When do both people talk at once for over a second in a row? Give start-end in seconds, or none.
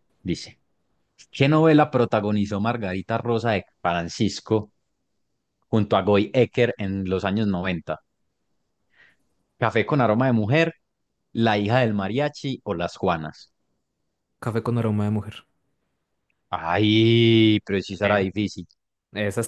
none